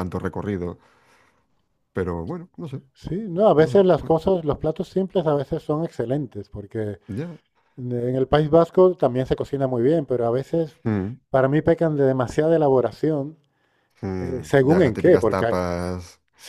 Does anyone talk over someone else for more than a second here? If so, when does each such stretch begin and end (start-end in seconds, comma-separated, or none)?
14.2-15.6